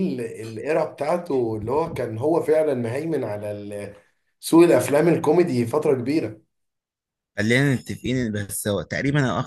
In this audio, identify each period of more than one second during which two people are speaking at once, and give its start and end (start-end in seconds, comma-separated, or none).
none